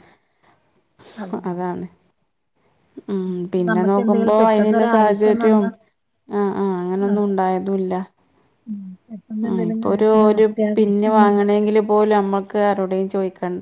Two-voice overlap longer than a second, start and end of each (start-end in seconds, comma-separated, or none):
3.7-5.7, 9.5-11.7